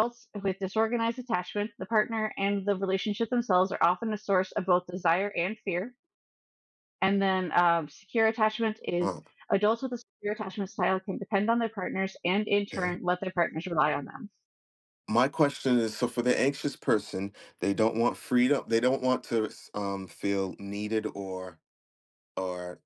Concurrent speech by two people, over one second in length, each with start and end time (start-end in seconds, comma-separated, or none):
none